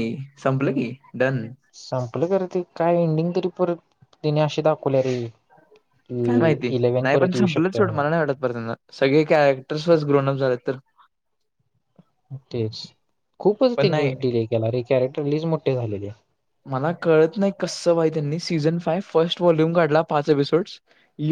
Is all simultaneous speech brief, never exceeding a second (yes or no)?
no